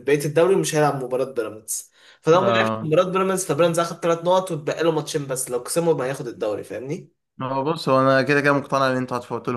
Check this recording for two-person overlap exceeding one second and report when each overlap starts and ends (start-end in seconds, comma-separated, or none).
none